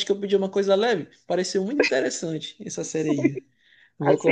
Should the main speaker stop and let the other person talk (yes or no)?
yes